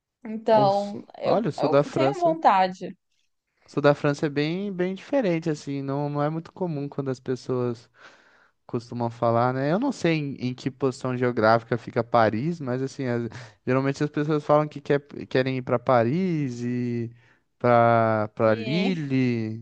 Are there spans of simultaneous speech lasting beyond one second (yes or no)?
yes